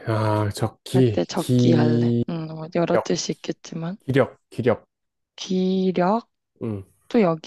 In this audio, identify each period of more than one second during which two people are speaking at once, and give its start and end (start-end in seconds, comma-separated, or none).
0.9-2.2